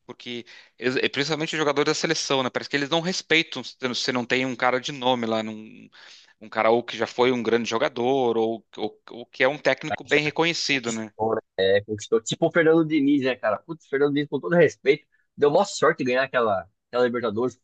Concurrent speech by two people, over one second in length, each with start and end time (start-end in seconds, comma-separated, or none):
9.6-11.1